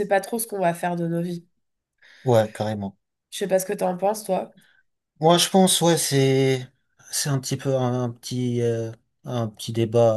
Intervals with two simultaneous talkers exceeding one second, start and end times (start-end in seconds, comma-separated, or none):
none